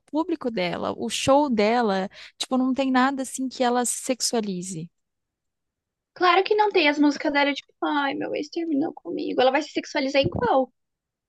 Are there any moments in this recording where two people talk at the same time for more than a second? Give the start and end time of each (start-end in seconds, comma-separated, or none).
none